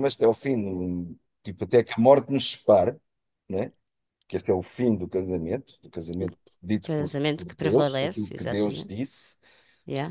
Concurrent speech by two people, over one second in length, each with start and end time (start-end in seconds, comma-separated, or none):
6.8-8.9